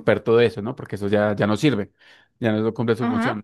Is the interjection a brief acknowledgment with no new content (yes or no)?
yes